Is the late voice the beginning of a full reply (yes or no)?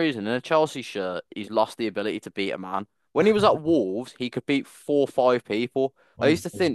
no